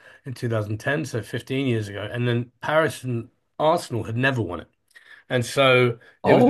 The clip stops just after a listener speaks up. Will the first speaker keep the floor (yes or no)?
no